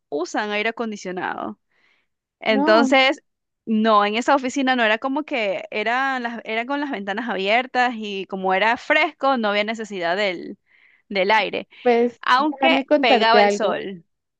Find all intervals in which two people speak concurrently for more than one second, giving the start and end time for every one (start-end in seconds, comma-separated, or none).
12.2-13.8